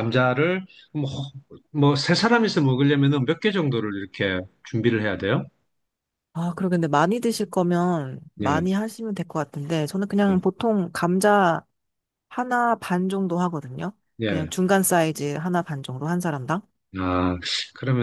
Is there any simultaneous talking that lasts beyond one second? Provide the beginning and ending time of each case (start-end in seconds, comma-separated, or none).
none